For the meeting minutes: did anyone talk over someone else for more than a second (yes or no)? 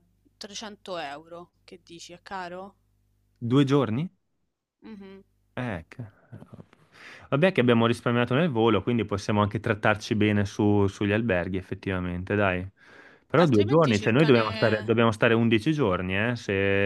yes